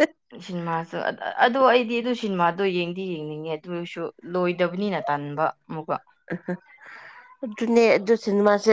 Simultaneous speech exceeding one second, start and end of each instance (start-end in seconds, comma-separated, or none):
none